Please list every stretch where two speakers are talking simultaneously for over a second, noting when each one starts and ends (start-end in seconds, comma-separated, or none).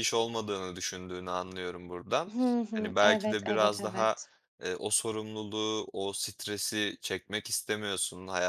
2.7-4.2